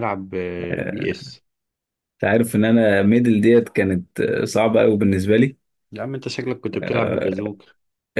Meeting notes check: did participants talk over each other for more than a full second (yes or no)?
no